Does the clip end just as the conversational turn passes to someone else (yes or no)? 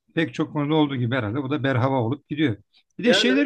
no